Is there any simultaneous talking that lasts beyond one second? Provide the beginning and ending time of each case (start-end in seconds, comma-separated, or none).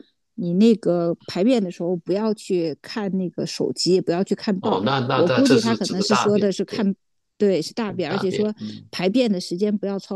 4.6-6.9